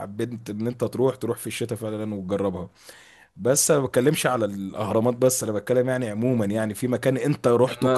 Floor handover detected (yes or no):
yes